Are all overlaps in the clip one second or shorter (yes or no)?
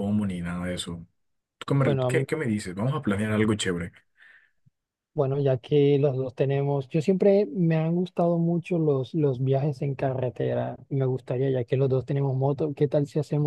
yes